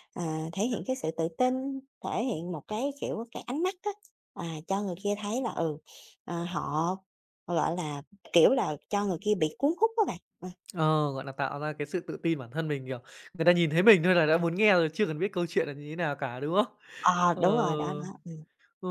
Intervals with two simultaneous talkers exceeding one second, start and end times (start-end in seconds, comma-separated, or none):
none